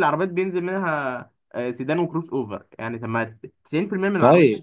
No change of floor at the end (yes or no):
no